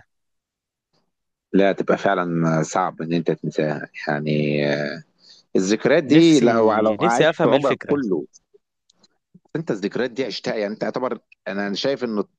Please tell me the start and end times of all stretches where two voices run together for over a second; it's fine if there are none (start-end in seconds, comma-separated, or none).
6.1-8.0